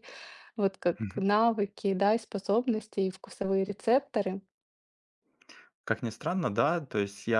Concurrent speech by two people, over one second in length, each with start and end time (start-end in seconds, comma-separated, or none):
none